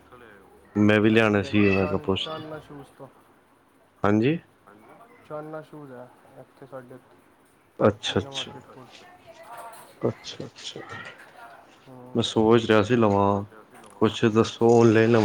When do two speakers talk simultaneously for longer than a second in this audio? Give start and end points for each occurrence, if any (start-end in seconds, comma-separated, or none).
0.8-2.3